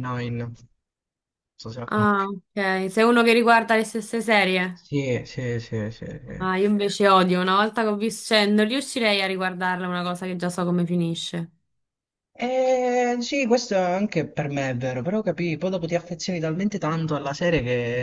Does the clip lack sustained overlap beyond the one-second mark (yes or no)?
yes